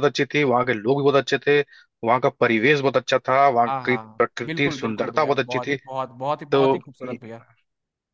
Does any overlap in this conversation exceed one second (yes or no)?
yes